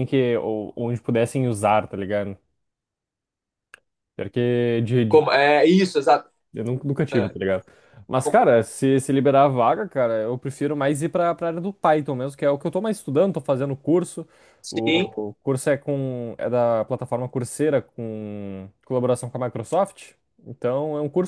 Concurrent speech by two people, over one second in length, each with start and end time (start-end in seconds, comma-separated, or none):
none